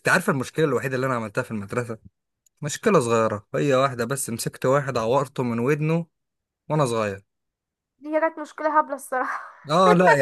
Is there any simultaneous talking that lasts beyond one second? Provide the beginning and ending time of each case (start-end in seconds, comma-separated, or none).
none